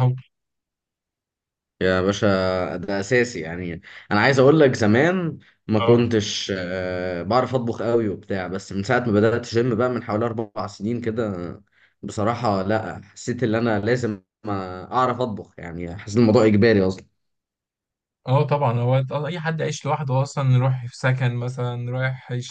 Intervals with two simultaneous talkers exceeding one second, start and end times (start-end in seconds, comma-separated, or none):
none